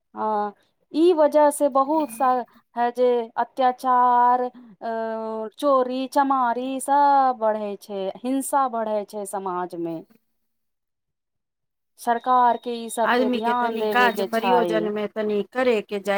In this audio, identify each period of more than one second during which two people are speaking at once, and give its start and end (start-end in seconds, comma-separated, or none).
13.1-14.9